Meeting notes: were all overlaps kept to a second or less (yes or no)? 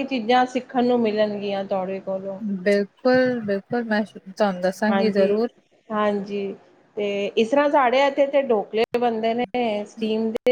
yes